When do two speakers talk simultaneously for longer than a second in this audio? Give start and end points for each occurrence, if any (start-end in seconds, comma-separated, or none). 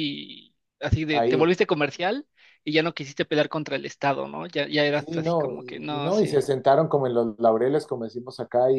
5.0-6.5